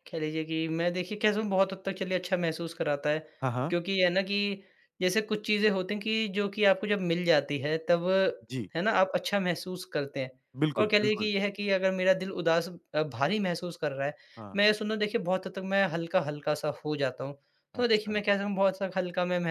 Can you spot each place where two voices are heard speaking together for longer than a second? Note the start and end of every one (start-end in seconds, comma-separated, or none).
none